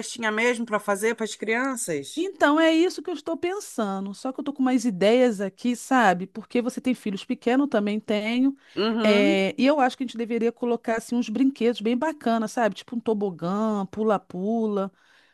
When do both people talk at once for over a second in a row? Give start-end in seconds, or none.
none